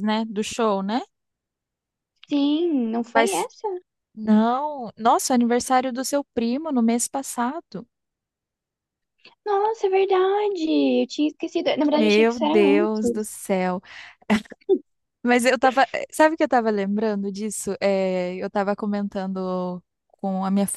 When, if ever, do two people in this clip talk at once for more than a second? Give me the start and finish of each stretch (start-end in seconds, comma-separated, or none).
11.8-13.3